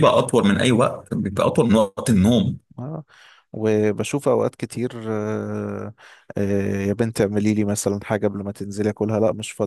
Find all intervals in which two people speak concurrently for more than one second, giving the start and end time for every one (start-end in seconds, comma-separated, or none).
none